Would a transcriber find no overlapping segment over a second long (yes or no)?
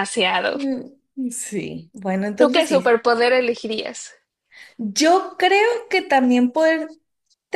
yes